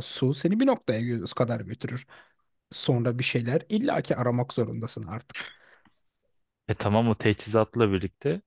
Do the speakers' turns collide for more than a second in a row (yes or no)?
no